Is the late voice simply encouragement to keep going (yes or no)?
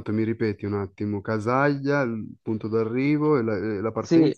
no